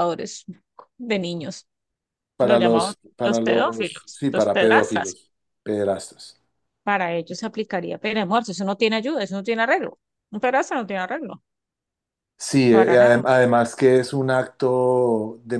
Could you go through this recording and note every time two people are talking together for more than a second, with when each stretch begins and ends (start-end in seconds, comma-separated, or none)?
2.4-5.2